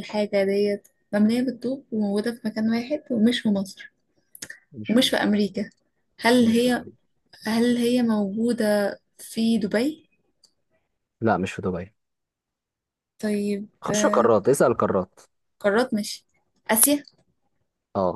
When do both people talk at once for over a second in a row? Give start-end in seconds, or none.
none